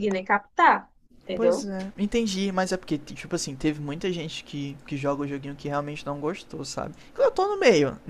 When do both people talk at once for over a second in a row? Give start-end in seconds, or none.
none